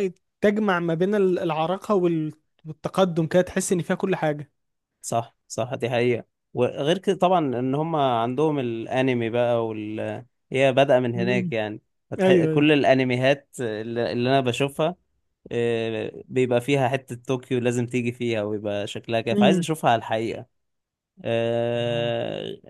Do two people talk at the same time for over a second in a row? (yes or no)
no